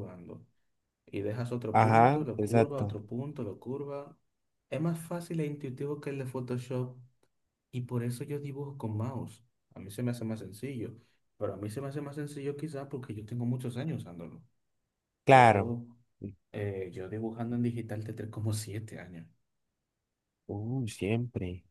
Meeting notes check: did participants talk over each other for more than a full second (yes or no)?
yes